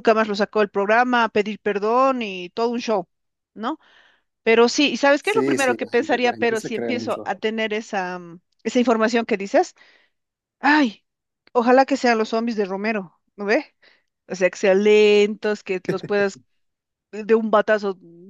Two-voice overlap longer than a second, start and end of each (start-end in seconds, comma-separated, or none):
5.2-7.3